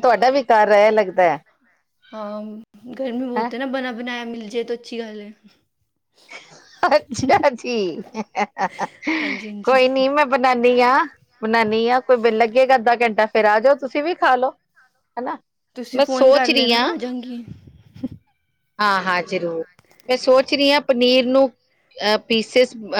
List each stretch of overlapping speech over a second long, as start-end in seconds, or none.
none